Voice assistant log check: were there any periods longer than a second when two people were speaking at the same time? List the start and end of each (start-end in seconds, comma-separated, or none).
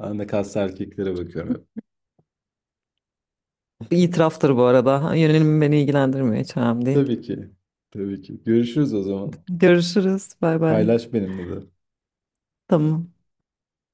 none